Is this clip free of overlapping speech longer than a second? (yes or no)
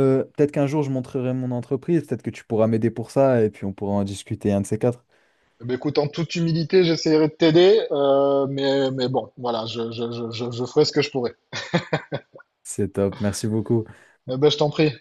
yes